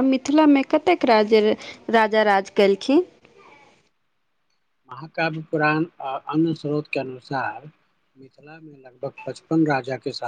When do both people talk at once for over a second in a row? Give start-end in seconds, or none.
none